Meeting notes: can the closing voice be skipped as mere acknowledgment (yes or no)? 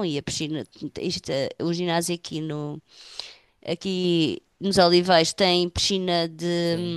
yes